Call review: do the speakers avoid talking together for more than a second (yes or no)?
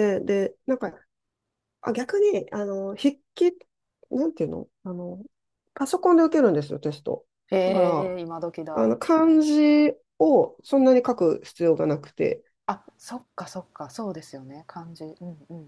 yes